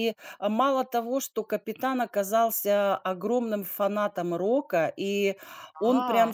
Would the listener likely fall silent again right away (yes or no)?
yes